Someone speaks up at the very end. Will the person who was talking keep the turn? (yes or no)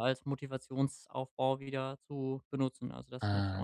no